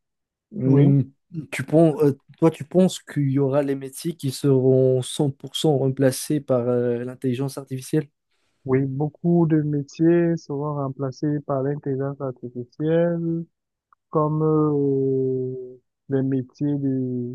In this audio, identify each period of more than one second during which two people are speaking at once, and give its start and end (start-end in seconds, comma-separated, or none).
none